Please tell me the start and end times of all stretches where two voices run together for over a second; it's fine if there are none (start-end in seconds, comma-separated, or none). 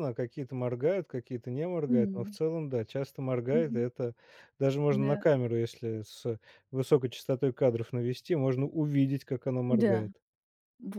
none